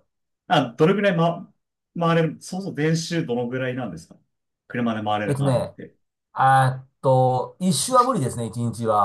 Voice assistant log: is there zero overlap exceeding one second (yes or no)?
yes